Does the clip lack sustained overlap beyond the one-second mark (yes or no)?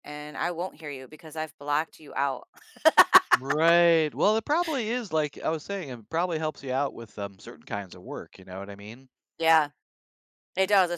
yes